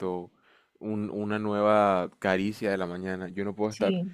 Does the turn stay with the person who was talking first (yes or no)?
yes